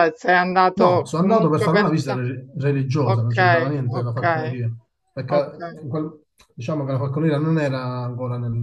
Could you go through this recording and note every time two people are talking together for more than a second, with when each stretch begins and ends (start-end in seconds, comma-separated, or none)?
0.7-2.2, 3.0-4.6